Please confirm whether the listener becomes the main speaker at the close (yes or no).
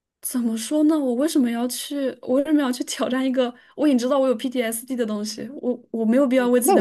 yes